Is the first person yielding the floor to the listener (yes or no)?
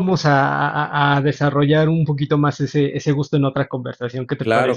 yes